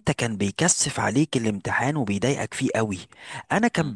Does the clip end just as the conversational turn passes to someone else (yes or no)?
no